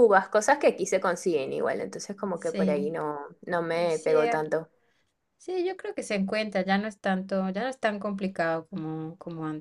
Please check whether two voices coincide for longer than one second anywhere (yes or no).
no